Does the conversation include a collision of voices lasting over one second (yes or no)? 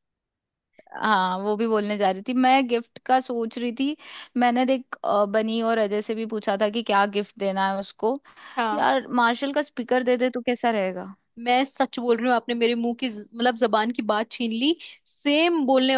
no